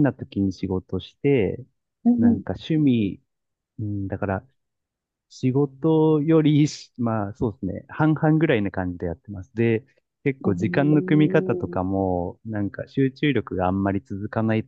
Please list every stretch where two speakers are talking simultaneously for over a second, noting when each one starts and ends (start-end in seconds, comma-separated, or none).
10.4-11.8